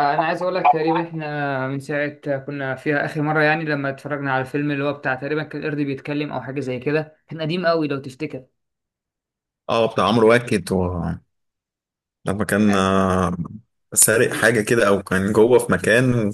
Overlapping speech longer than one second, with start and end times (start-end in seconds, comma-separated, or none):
none